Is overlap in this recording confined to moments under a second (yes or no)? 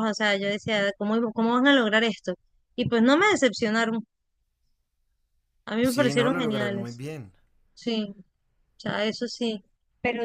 no